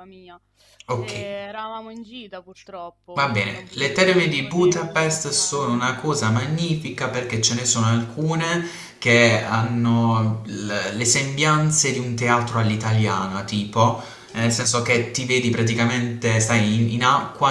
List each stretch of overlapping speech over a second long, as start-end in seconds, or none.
3.1-5.8